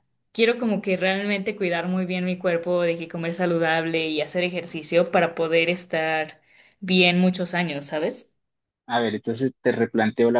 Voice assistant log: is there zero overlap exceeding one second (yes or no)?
yes